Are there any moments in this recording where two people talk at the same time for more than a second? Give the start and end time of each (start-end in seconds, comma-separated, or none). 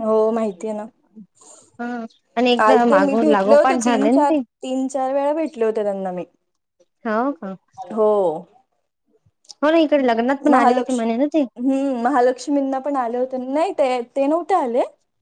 2.6-4.4